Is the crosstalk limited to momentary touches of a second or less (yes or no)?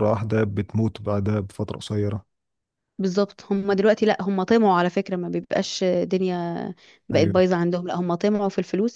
yes